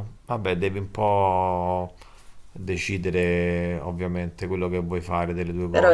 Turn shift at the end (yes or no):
yes